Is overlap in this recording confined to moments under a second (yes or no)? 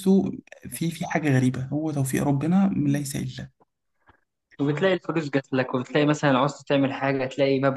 yes